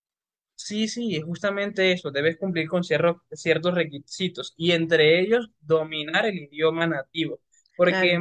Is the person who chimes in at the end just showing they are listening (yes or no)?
yes